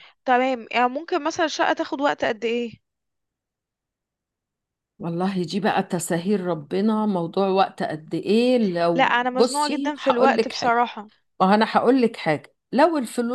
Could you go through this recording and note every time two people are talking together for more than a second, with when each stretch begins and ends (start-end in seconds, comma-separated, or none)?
8.9-10.8